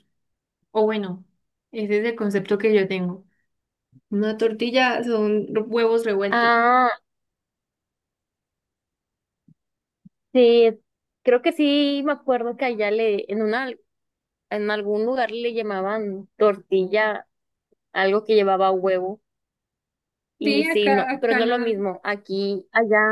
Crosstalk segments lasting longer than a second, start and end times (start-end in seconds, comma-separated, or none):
20.4-21.7